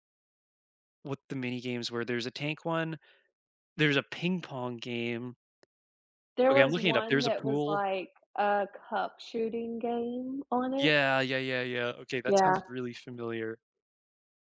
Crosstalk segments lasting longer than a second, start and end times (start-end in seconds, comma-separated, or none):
6.5-7.8